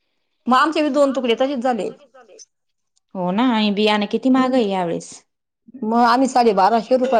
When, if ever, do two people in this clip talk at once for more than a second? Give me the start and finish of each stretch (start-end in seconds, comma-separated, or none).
none